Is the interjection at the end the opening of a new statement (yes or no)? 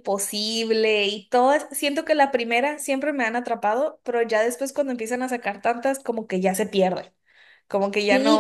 yes